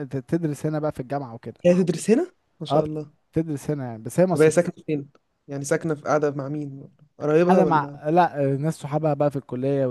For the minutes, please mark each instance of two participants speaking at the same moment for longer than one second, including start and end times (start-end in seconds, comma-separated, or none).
none